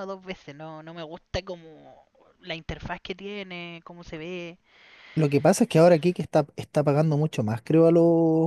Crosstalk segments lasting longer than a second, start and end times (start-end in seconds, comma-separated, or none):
none